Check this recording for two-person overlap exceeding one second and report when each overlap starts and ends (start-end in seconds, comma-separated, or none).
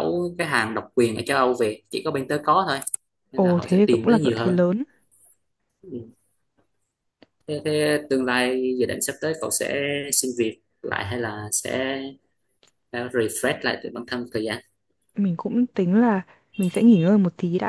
3.3-4.6